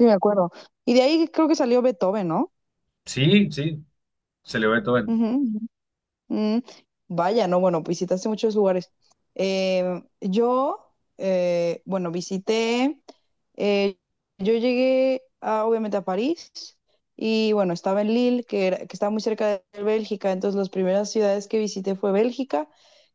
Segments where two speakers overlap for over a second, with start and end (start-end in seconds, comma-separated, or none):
none